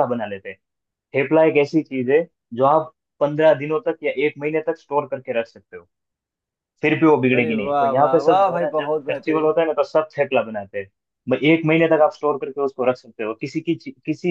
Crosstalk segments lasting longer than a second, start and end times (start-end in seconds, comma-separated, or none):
7.3-9.5